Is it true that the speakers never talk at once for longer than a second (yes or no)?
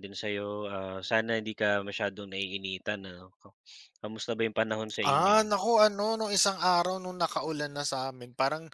yes